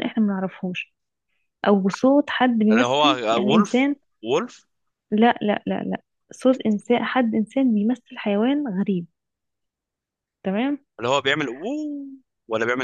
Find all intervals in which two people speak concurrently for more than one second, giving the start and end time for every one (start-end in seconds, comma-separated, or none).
2.7-4.0